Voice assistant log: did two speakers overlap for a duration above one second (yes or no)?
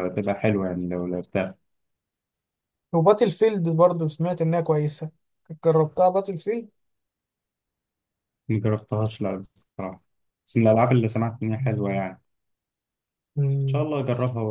no